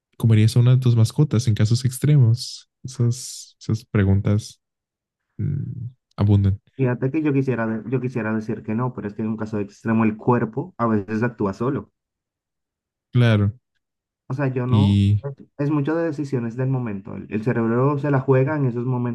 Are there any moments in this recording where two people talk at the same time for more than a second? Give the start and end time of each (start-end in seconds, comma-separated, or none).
none